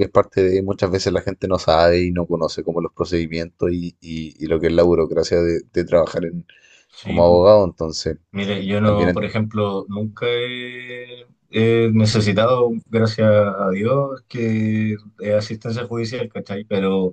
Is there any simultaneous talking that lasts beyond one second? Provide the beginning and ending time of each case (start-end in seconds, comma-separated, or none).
none